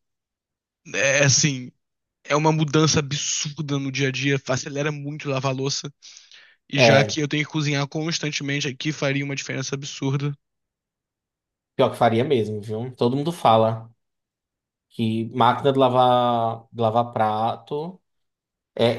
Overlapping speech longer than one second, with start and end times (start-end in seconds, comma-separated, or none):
none